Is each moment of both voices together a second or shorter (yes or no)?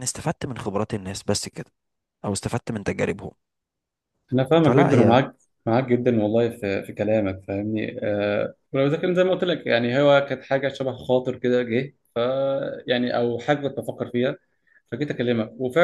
yes